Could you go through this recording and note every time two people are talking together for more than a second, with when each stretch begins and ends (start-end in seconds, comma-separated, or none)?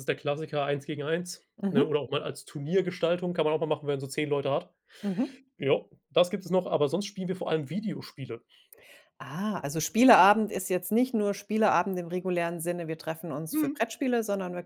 none